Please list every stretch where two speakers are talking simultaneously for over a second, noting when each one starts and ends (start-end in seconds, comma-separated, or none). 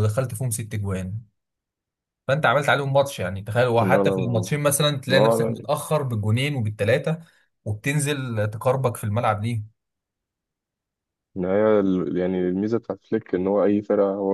none